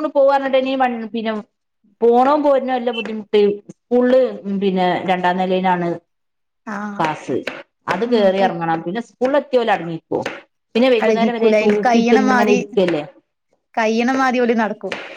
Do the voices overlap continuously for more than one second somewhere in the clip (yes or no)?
yes